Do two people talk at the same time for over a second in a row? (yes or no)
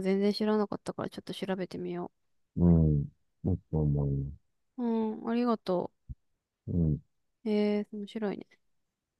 no